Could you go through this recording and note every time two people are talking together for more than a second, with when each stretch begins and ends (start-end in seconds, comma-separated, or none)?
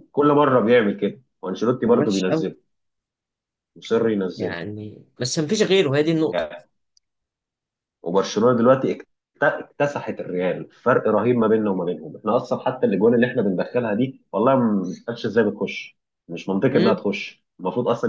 none